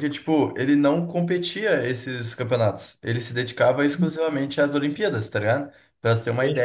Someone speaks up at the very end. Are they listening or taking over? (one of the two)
listening